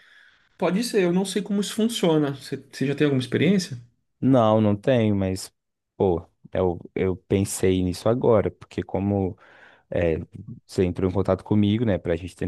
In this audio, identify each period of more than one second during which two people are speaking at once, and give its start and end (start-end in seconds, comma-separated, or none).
none